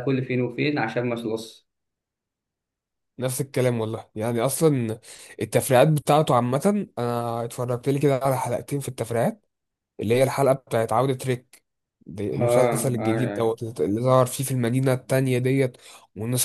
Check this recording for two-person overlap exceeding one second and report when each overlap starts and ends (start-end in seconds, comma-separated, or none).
12.3-13.6